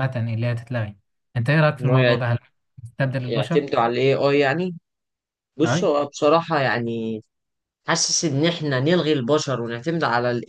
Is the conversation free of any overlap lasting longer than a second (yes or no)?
yes